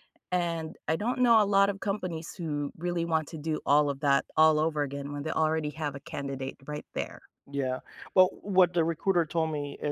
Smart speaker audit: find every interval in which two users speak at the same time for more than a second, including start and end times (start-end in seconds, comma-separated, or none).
none